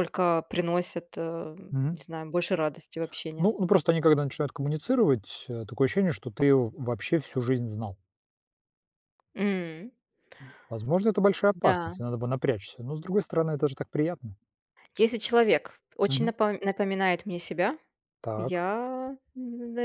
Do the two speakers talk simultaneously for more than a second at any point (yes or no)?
no